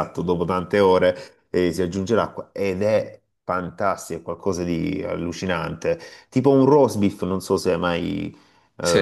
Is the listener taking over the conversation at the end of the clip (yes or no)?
no